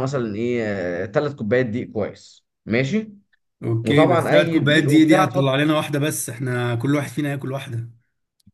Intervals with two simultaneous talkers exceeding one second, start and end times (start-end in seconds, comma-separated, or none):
3.9-5.6